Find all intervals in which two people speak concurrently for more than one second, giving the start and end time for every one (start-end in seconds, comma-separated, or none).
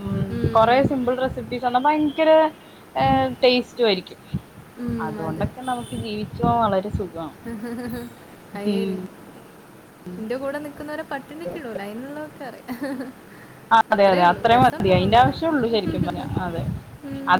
13.9-15.4